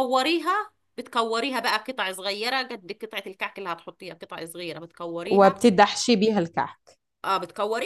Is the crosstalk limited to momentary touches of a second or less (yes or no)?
yes